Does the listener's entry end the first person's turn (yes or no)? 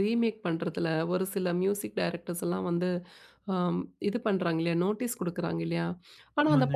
no